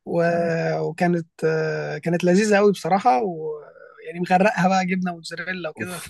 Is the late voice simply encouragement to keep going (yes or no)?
no